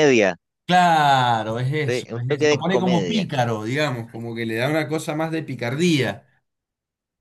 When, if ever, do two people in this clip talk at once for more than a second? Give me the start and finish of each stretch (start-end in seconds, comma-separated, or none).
1.9-3.3